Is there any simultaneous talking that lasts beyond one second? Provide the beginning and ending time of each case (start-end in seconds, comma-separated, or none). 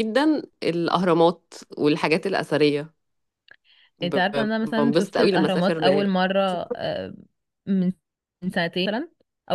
4.0-5.8